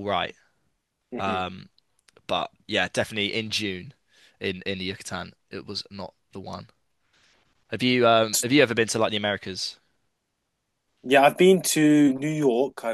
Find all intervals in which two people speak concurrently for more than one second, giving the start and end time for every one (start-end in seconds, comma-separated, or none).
none